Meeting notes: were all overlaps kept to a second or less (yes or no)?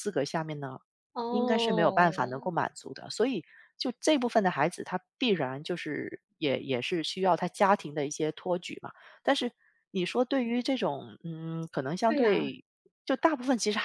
no